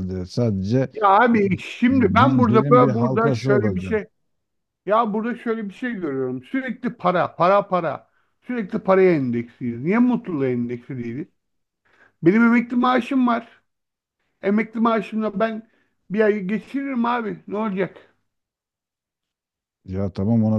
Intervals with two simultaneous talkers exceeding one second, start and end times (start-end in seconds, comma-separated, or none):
1.9-4.0